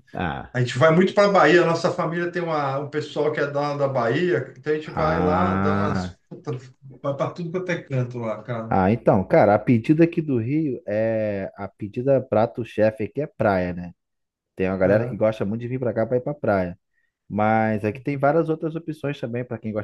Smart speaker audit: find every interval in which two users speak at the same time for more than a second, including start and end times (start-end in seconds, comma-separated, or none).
4.8-6.2